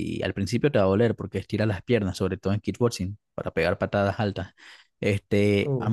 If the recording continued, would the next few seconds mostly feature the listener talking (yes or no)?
no